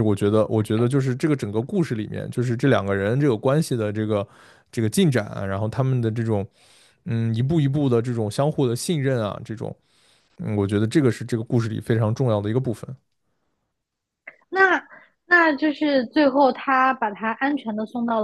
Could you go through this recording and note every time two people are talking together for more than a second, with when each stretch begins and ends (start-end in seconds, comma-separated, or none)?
none